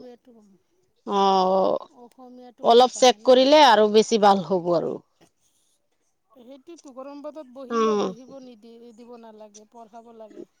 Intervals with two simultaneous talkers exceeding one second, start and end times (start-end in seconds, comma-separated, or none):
none